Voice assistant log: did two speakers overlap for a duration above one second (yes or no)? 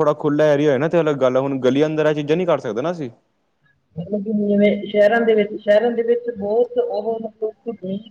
no